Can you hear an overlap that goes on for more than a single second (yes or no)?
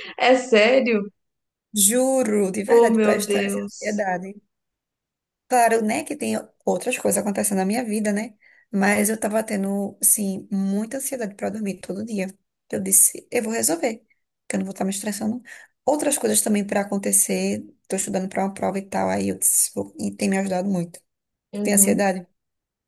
yes